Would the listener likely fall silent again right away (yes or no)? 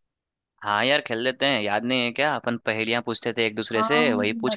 no